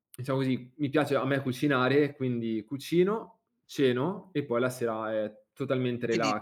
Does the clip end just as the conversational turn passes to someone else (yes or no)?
yes